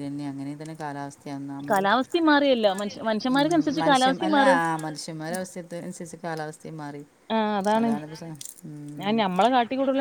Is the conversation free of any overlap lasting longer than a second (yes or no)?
no